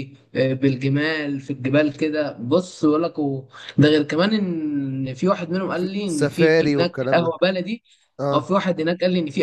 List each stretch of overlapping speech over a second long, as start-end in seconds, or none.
5.7-7.3